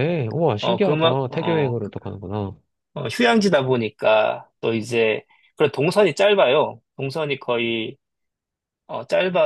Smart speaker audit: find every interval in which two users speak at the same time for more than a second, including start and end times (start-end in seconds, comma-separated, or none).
0.6-1.9